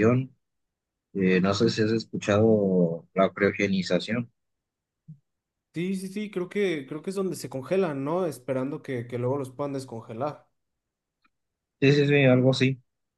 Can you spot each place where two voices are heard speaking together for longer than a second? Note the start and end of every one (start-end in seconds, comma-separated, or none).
none